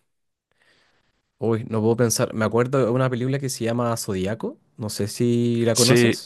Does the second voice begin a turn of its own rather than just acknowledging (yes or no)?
yes